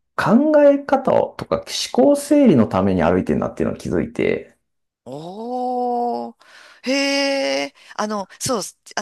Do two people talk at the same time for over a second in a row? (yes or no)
no